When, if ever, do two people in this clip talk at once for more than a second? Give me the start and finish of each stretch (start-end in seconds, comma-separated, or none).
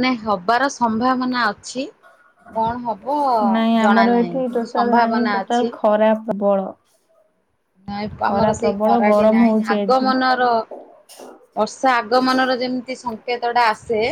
3.8-5.7, 8.2-10.1